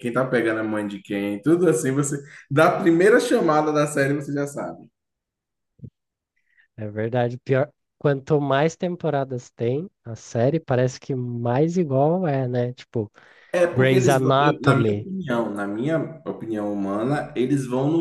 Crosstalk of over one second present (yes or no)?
yes